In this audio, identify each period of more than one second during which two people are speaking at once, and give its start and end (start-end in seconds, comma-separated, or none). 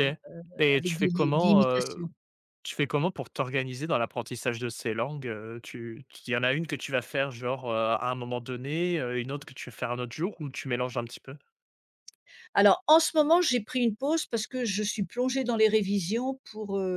0.6-2.1